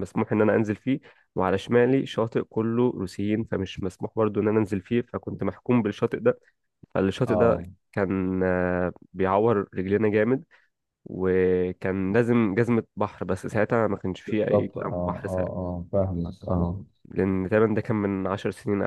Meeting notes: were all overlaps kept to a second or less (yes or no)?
no